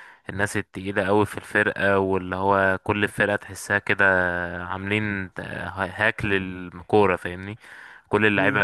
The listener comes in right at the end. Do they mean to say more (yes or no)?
no